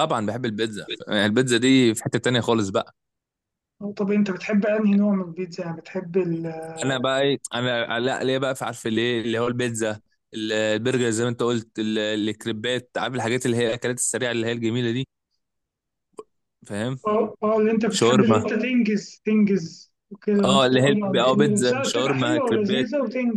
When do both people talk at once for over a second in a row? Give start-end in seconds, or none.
20.4-22.9